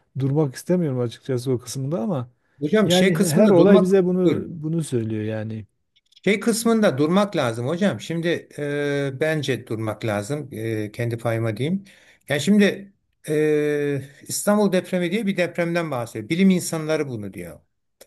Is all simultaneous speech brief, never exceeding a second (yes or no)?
no